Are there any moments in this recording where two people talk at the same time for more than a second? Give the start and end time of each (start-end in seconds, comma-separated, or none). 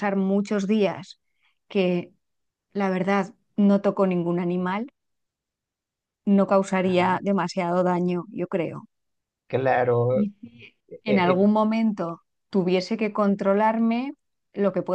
none